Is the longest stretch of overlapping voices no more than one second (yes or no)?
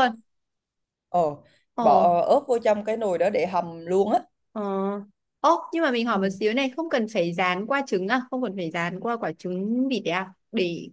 yes